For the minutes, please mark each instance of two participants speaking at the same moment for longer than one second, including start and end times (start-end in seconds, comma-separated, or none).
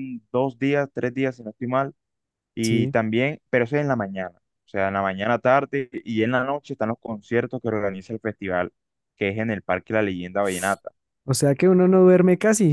none